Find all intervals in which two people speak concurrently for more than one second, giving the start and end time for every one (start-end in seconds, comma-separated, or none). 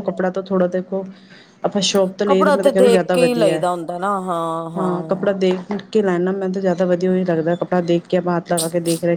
2.3-3.6